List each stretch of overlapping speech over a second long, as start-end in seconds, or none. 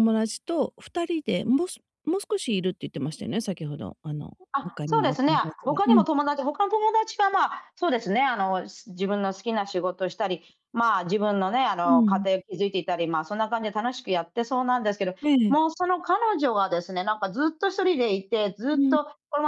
4.5-6.1